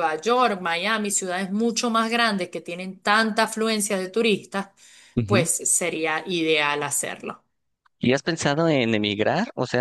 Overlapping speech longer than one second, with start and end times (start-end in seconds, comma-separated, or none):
none